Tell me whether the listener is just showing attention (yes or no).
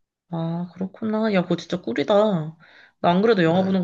yes